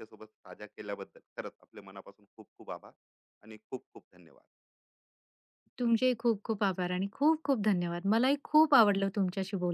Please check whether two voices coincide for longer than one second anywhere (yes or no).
no